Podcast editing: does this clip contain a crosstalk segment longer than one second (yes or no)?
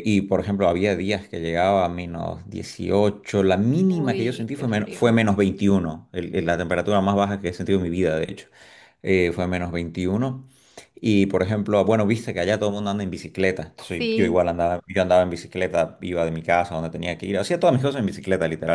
yes